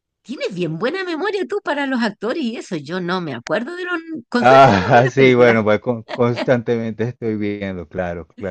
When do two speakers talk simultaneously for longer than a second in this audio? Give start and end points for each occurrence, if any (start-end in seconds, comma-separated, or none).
4.4-5.6